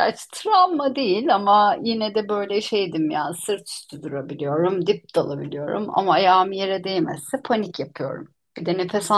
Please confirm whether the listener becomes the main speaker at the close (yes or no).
yes